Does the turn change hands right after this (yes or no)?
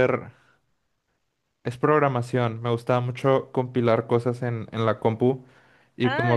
yes